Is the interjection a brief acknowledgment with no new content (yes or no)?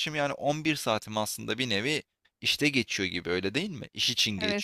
no